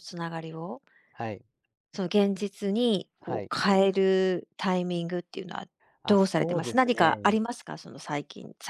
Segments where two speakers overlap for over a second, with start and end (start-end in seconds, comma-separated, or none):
6.1-7.4